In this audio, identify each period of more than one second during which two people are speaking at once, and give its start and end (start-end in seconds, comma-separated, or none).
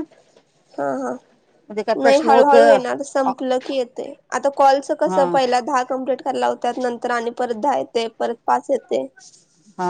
2.0-3.3